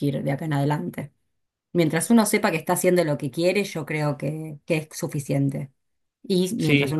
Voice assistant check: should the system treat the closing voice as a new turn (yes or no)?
no